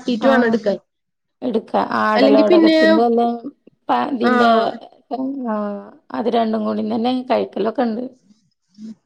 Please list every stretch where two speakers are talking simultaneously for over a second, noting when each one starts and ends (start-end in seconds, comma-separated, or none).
none